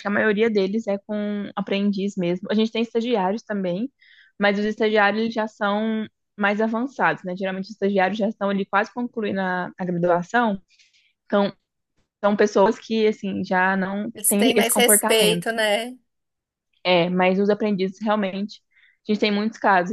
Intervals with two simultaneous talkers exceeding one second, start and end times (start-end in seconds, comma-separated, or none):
14.1-15.4